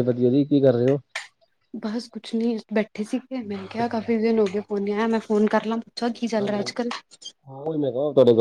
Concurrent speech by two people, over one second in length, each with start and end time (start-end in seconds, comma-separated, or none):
none